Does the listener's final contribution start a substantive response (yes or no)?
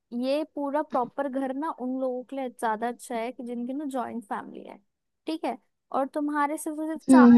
no